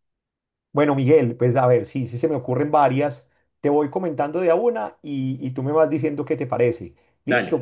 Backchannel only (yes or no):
yes